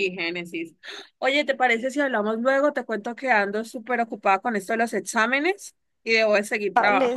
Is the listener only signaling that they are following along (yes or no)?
no